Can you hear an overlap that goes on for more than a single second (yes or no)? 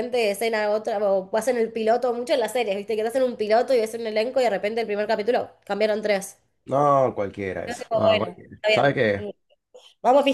yes